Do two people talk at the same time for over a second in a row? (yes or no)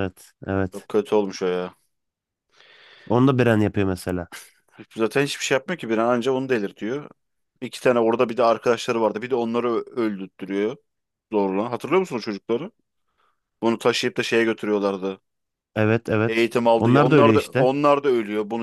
yes